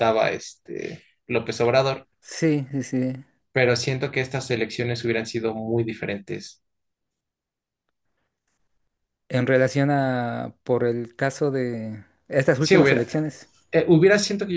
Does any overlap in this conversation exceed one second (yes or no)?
no